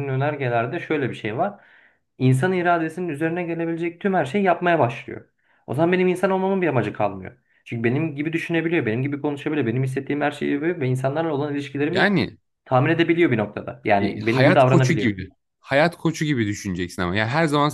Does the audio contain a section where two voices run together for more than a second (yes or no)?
yes